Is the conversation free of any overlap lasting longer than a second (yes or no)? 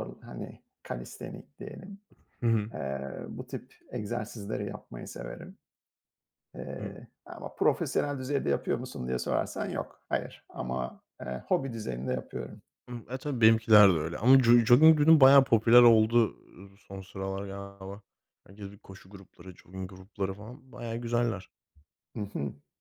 yes